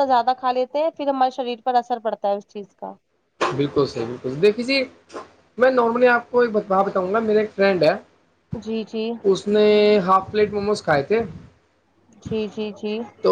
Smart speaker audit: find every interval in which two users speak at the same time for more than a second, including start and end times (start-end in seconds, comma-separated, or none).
none